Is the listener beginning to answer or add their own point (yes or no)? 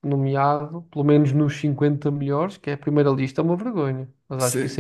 yes